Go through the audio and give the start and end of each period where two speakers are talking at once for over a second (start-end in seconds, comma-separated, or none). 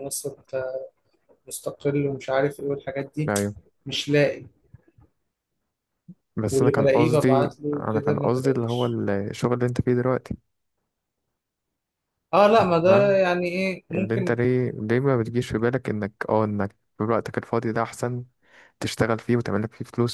6.5-9.0